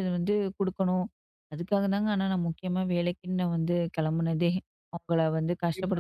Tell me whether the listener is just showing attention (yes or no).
no